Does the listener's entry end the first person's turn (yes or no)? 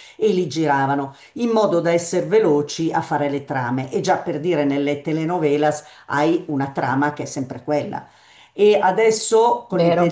no